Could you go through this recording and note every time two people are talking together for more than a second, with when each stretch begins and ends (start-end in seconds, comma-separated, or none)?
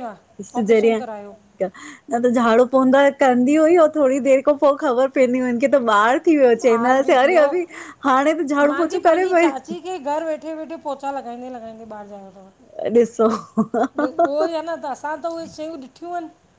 none